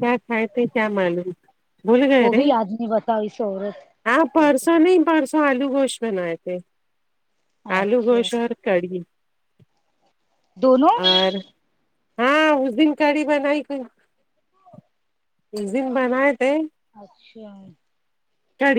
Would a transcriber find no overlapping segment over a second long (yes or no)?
yes